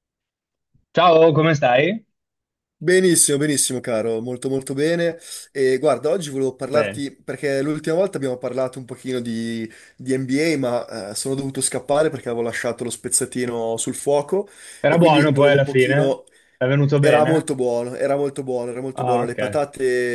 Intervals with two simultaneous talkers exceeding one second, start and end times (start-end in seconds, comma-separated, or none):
14.9-16.2